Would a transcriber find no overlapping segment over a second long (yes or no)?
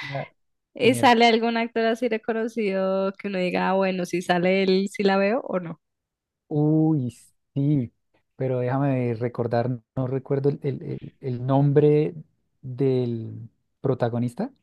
yes